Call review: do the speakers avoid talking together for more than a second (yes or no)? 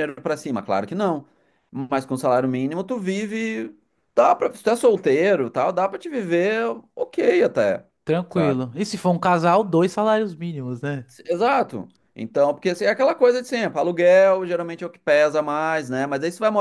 yes